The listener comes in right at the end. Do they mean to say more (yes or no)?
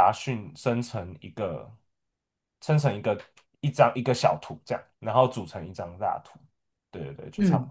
yes